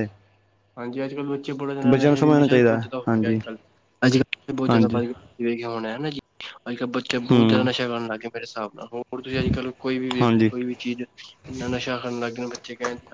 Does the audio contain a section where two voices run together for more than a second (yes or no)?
yes